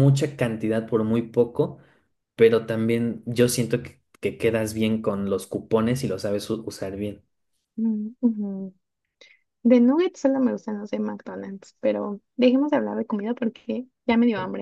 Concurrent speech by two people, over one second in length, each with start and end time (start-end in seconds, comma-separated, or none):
none